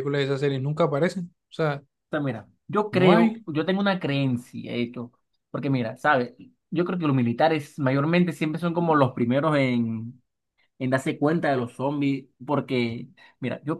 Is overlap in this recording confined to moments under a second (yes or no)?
yes